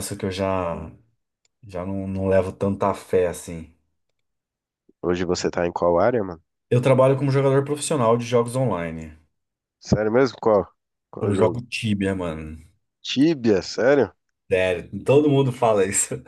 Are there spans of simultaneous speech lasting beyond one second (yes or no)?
no